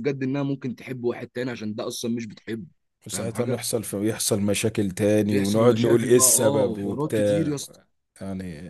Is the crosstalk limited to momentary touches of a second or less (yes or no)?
no